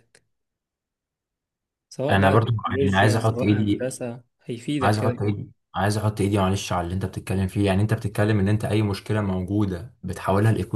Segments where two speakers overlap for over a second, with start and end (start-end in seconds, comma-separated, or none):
2.1-3.9